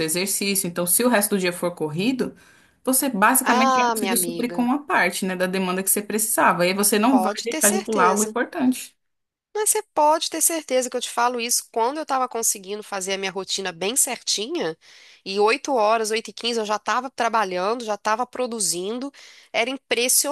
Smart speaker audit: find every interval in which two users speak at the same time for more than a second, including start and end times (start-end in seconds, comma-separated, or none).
3.4-4.7, 7.1-8.3